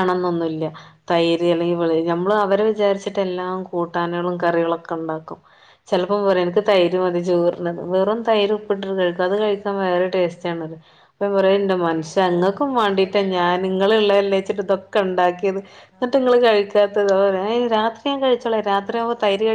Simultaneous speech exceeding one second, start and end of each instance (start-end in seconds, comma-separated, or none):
11.5-13.6